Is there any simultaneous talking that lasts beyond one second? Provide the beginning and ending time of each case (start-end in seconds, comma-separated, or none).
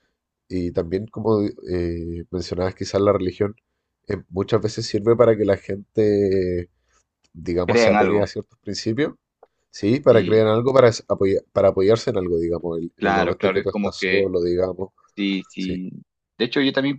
13.0-14.3